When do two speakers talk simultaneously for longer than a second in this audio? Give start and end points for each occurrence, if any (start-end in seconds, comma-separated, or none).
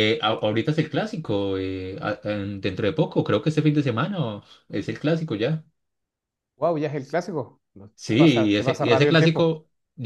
8.0-9.5